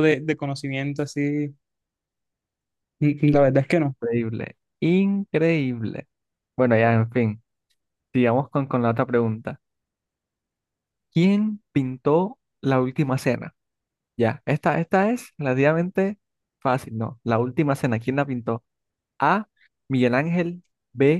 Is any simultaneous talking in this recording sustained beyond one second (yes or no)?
no